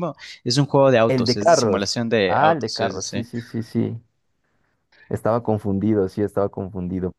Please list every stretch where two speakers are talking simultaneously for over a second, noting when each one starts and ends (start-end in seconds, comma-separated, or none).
1.1-3.3